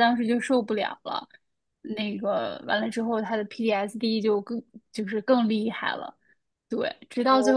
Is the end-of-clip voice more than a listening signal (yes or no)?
no